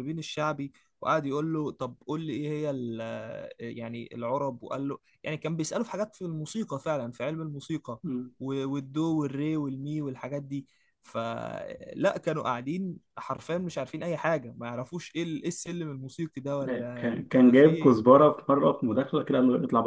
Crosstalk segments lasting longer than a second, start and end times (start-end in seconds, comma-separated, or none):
16.7-18.0